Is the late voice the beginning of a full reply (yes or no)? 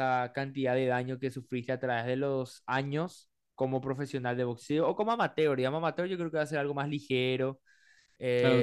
yes